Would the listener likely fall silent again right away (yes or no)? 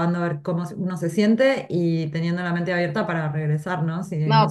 no